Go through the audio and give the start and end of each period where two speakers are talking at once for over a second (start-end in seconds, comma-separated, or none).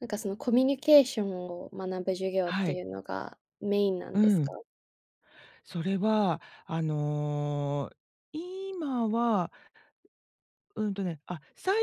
none